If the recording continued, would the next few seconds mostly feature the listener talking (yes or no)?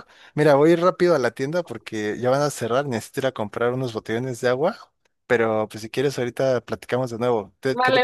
yes